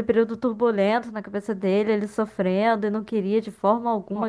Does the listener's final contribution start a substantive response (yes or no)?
yes